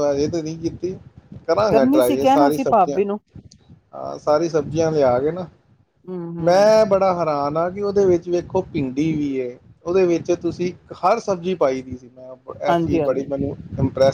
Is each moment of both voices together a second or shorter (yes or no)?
no